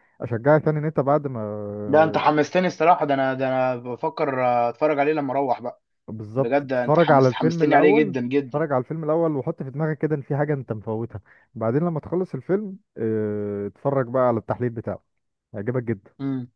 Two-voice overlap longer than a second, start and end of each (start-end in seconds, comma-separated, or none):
6.4-8.6